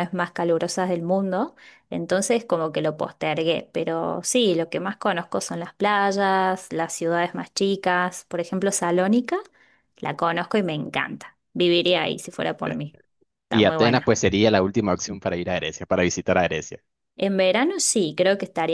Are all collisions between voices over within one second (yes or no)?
yes